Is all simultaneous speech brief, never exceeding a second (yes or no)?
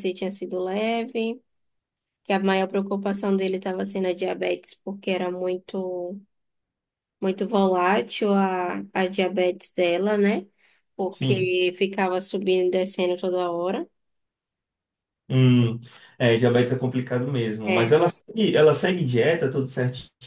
yes